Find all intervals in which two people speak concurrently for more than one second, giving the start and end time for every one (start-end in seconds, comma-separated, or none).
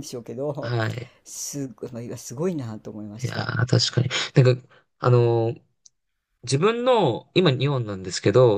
none